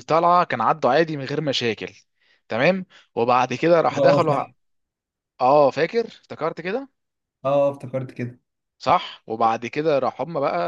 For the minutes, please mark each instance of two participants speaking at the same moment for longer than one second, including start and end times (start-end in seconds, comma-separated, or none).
none